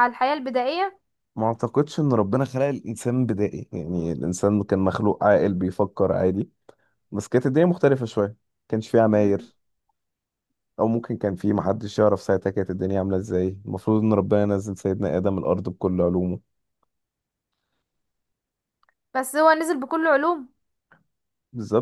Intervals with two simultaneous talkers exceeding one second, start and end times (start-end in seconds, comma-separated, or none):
none